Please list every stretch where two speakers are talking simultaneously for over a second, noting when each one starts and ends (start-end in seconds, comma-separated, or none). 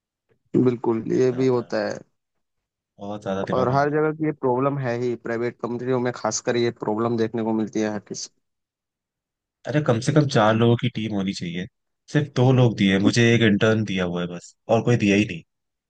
none